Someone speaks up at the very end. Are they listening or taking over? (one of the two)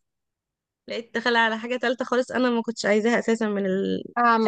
taking over